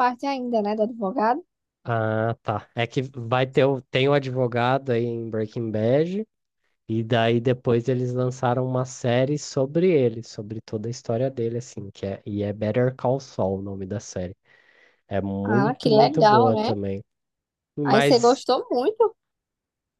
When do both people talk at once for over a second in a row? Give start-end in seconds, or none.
15.4-16.7